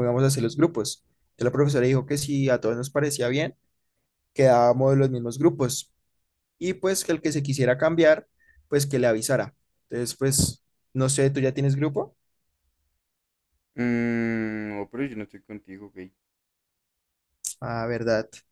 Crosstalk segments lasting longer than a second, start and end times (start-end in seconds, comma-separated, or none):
none